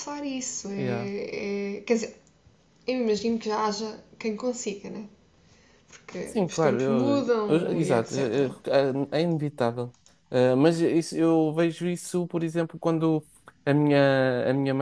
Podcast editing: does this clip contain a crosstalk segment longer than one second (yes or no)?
yes